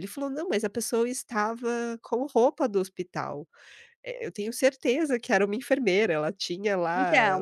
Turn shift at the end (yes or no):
yes